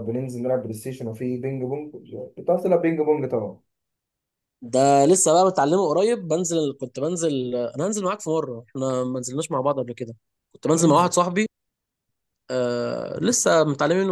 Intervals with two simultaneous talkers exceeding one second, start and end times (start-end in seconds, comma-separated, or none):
none